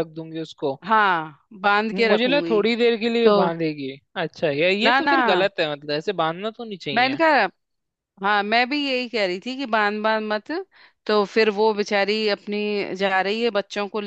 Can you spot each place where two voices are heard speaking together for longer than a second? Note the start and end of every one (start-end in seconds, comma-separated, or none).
none